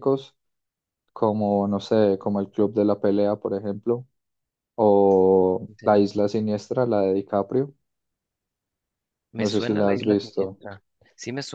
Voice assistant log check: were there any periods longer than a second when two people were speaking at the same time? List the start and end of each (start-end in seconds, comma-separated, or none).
9.4-10.6